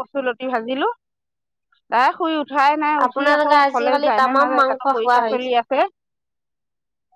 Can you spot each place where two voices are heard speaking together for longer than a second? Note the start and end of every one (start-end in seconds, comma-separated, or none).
3.1-5.5